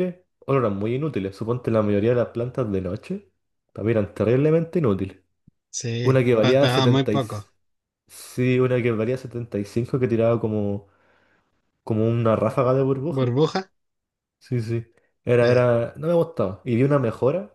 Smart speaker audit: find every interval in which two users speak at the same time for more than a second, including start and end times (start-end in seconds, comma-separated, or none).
6.0-7.2